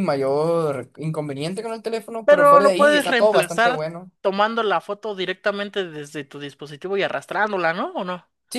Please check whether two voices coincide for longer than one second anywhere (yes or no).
yes